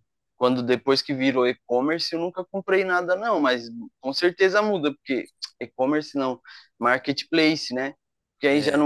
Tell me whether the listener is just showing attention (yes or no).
yes